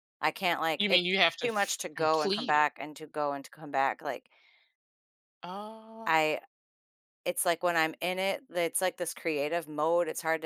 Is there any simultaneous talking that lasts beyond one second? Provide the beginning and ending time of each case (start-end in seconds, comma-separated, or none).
0.8-2.7